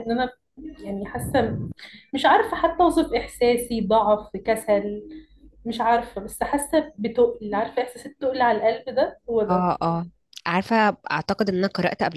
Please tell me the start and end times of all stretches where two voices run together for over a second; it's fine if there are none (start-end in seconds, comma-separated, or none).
none